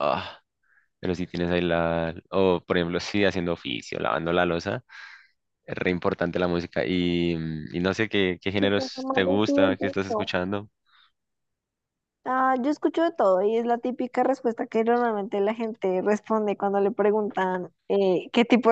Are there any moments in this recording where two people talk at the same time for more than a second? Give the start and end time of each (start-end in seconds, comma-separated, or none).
8.6-10.3